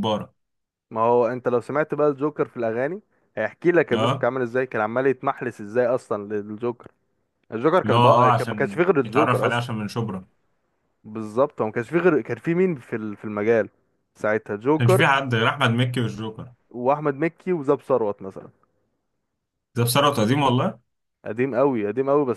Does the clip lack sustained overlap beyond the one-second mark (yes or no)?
no